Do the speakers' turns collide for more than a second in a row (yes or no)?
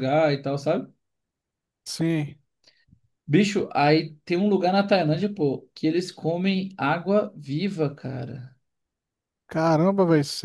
no